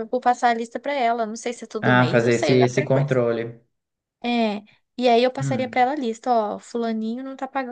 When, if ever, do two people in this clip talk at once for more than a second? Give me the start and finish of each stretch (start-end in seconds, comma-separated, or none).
1.8-3.2